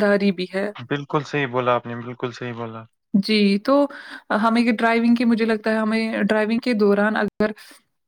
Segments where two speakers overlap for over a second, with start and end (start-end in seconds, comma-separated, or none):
none